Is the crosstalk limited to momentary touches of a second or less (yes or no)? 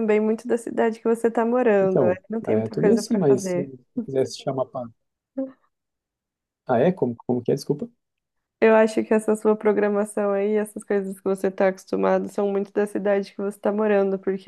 no